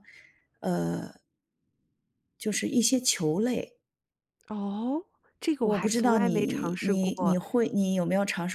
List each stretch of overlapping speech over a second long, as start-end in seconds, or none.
5.7-7.4